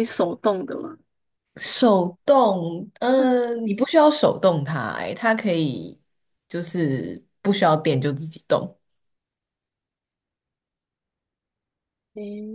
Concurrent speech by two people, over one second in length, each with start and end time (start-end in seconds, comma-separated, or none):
none